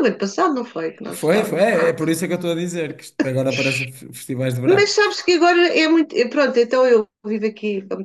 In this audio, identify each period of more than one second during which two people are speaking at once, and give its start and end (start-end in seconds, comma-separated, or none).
none